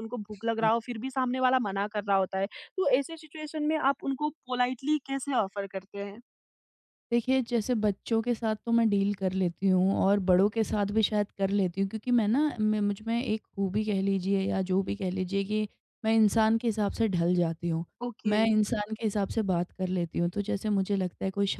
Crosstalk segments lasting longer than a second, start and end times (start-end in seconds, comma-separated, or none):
none